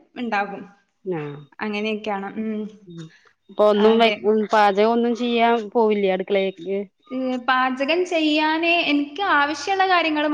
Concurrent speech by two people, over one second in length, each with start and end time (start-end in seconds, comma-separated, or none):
none